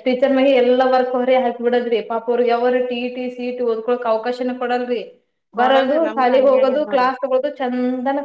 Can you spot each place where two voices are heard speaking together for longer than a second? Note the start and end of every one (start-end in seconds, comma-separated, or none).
5.6-7.1